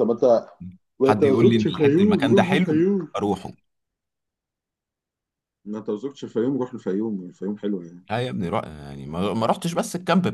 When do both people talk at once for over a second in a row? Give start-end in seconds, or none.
1.0-3.1